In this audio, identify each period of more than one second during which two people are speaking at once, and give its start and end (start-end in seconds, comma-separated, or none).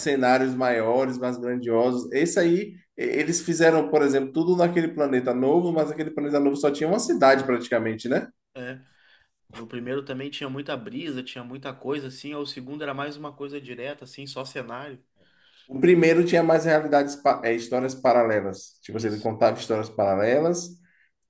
none